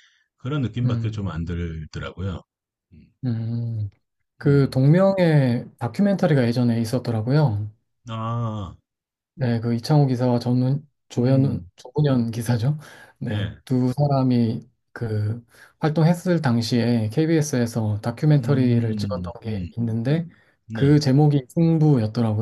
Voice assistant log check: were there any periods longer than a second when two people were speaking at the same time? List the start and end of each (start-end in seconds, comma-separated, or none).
18.4-19.7